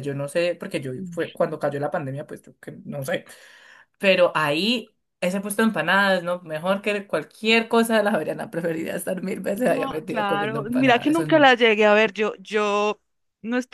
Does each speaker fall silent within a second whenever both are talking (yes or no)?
no